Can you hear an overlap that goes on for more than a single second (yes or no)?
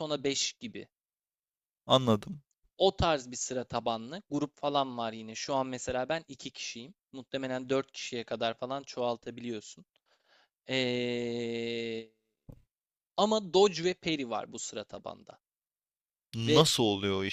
no